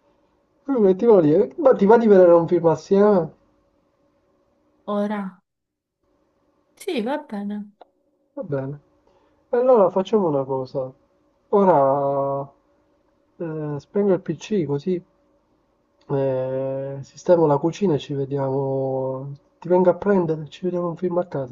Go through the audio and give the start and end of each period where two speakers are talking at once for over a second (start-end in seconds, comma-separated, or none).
none